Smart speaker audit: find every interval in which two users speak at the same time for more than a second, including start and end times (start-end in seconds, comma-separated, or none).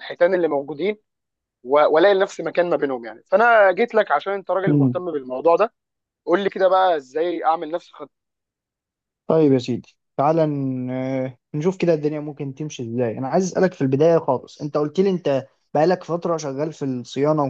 none